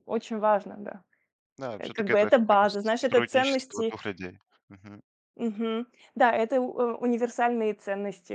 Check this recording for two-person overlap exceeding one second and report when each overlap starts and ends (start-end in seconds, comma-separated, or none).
1.8-3.9